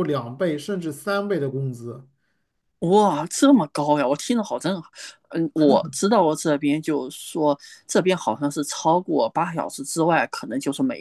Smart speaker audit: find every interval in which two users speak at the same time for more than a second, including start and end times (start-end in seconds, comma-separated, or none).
none